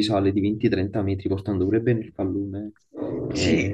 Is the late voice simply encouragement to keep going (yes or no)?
no